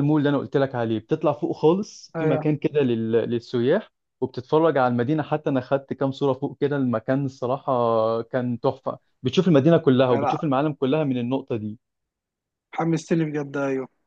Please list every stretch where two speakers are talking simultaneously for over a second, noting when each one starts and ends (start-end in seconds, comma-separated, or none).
none